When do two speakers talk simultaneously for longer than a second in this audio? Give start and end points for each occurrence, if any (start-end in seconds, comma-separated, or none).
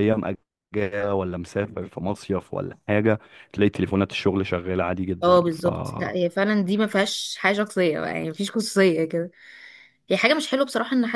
none